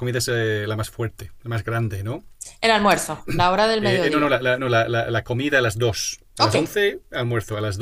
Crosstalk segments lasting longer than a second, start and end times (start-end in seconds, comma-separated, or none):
none